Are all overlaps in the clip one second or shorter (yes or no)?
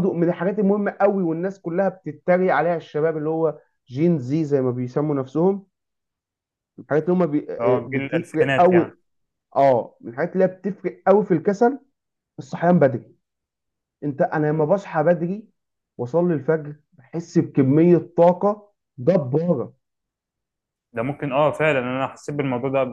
no